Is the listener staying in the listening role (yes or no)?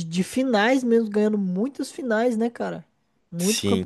no